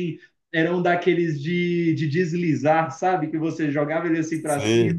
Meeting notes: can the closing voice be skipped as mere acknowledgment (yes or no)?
yes